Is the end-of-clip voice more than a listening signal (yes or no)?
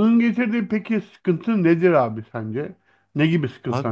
yes